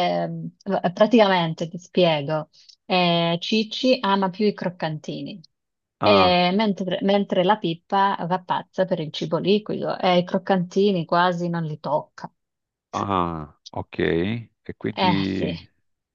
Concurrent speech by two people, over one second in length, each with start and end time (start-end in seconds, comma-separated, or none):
none